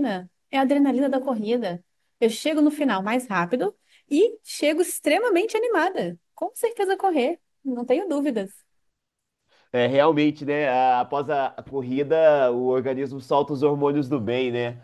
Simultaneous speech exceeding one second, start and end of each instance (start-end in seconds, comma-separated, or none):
none